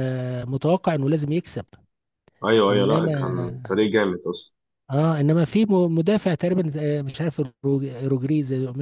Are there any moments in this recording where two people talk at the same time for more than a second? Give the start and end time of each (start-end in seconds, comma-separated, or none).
none